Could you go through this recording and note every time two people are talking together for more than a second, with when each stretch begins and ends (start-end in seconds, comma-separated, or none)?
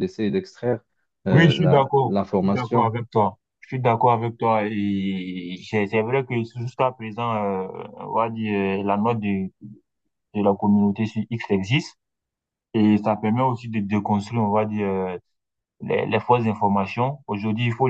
1.3-2.9